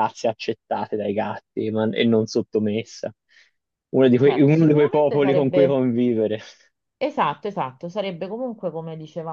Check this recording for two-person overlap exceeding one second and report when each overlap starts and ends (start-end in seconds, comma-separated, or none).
4.2-5.9